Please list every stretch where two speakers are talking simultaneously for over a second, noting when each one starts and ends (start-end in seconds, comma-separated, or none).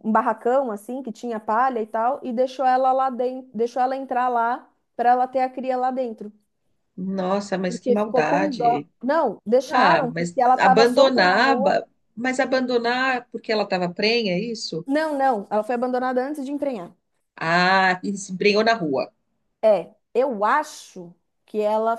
7.7-8.9, 9.7-11.8